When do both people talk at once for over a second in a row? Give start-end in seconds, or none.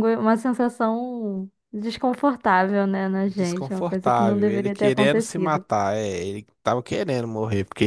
3.2-5.7